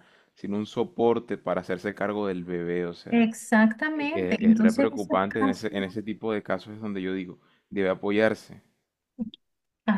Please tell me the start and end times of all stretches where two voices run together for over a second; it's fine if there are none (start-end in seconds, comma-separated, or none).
3.9-5.7